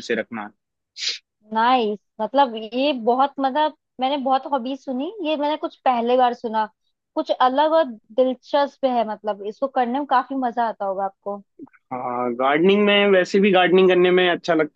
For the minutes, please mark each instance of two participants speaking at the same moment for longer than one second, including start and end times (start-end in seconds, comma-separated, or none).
none